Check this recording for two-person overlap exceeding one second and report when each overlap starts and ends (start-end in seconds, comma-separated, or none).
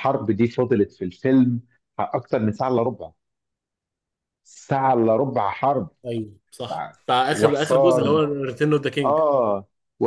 6.6-8.2